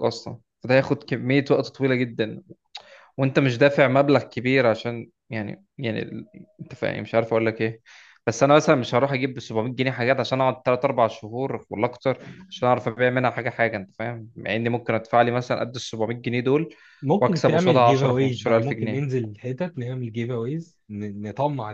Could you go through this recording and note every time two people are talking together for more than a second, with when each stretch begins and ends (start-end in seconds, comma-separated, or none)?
17.2-19.1